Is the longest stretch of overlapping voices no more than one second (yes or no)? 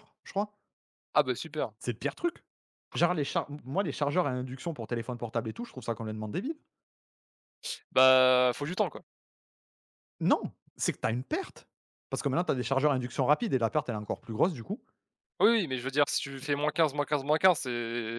yes